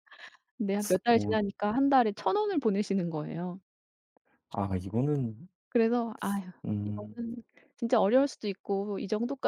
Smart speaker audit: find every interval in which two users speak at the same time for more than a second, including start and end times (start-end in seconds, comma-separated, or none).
none